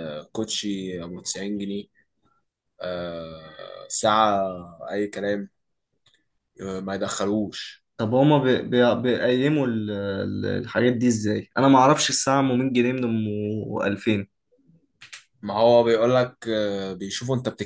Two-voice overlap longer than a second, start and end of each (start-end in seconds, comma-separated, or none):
none